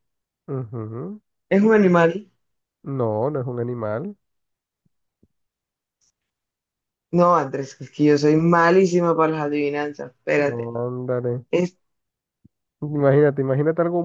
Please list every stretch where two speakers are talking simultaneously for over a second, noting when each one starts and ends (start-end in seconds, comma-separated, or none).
none